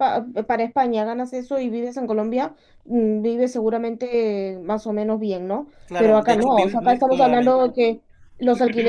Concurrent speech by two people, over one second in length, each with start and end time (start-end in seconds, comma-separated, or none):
5.8-7.7